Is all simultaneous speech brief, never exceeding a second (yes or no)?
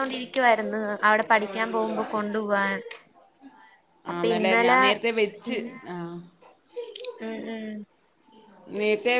yes